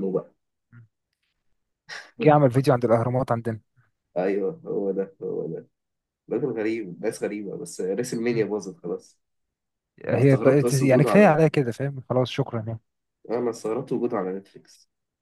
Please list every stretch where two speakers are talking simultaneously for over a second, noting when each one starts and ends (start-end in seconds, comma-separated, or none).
10.1-11.3